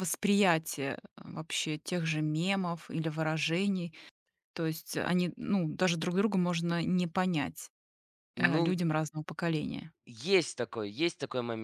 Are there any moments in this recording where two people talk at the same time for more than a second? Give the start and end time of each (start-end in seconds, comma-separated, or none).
none